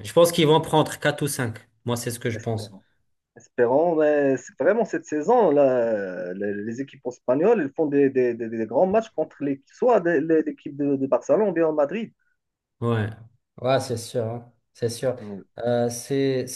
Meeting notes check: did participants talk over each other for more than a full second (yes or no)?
no